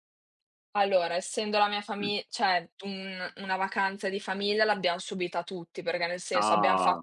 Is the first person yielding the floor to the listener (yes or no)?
no